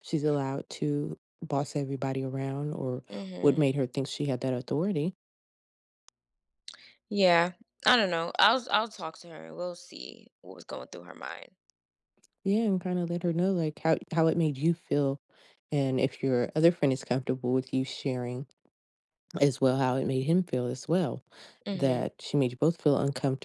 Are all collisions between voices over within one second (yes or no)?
yes